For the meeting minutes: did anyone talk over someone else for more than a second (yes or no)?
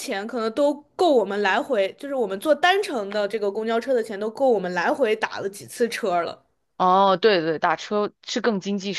no